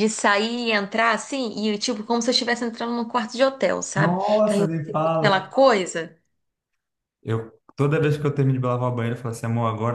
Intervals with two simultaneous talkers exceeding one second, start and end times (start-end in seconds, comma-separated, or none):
4.0-5.5